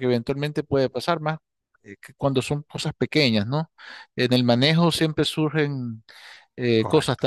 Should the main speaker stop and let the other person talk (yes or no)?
no